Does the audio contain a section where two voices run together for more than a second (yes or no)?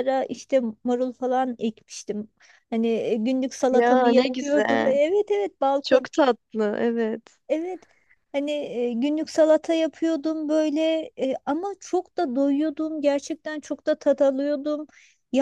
yes